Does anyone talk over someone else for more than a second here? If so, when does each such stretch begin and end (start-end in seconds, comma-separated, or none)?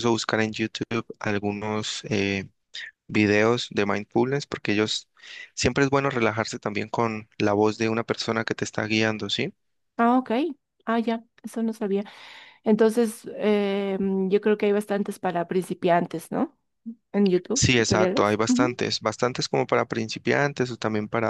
17.5-18.8